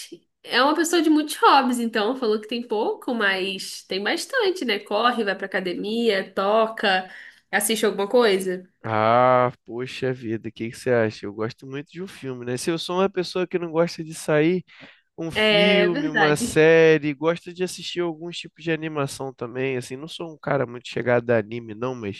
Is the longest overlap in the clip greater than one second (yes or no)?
yes